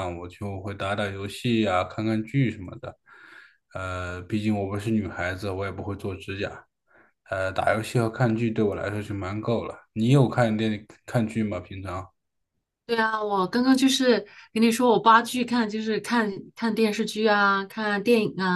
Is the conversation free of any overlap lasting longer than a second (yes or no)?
yes